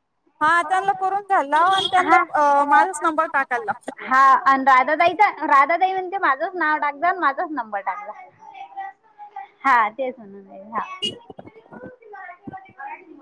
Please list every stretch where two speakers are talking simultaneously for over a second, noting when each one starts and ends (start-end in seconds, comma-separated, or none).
none